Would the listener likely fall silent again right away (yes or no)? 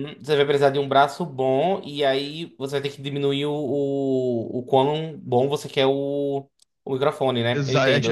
no